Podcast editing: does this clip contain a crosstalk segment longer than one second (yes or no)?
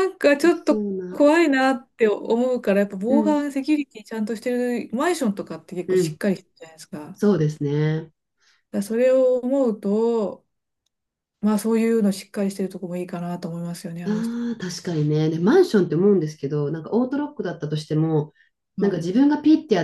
no